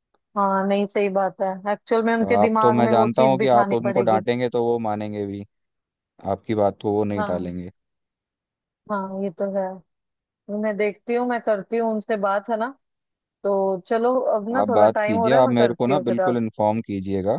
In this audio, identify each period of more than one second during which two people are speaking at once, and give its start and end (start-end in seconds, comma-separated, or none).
2.4-4.2, 14.6-16.4